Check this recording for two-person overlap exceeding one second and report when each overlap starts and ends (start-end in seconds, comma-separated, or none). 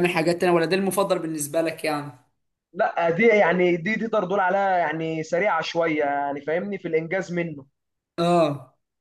none